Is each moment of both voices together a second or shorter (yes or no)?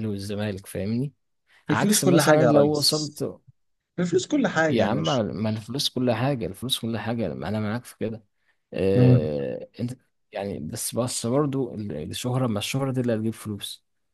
no